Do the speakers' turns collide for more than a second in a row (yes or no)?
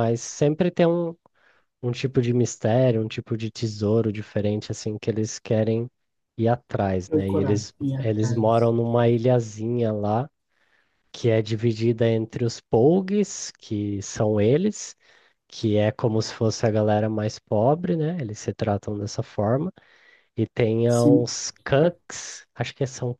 yes